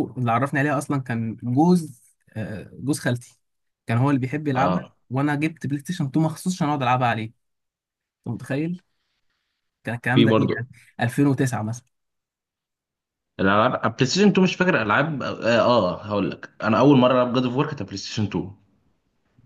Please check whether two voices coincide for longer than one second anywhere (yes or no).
no